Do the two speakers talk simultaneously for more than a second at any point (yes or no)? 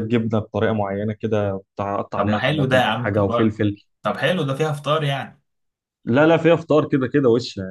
yes